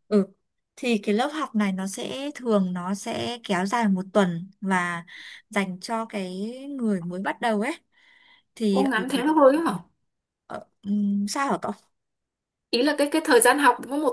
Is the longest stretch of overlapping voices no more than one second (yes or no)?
yes